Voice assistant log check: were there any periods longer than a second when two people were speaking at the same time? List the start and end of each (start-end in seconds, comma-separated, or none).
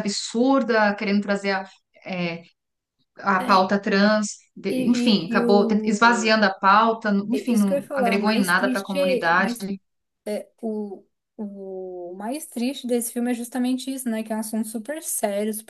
4.7-6.3, 7.3-9.6